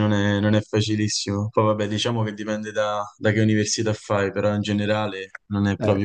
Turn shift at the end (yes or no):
yes